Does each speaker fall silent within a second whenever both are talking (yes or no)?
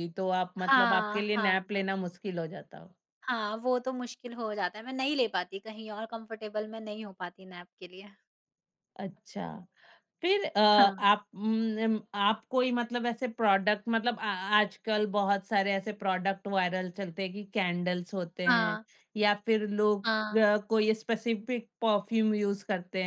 no